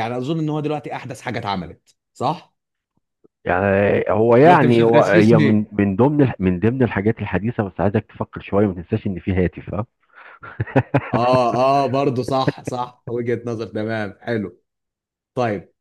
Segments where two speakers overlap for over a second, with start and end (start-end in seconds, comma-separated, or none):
4.4-5.7